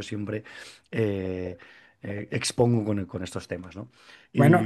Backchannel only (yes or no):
no